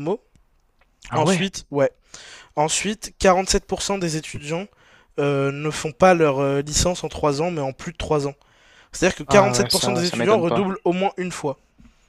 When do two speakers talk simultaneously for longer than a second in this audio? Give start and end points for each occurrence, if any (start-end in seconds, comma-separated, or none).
9.3-10.6